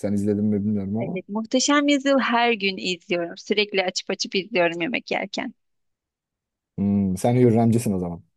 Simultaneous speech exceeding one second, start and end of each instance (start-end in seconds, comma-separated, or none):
none